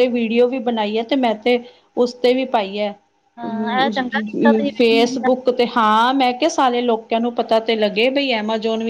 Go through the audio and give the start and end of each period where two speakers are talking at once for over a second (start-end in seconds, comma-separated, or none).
3.5-5.2